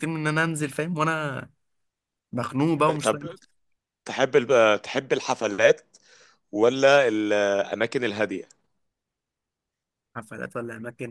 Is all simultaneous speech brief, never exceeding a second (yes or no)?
yes